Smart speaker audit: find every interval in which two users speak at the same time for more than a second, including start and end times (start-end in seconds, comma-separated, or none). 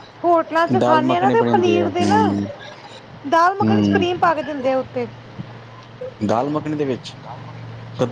0.8-2.2